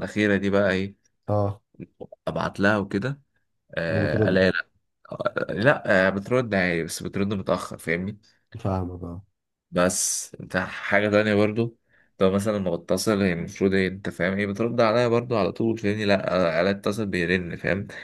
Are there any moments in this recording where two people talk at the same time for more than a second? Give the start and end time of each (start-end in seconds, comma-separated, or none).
none